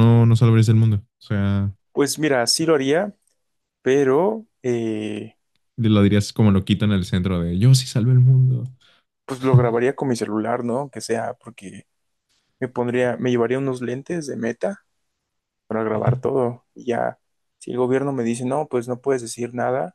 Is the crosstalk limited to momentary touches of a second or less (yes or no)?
yes